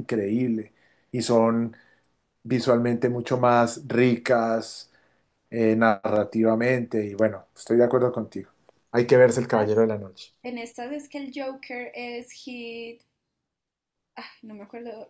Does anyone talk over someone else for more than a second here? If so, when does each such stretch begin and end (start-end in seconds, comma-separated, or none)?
none